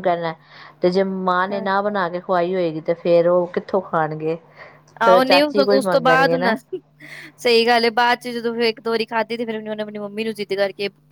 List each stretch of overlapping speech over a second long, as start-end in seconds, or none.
5.0-6.5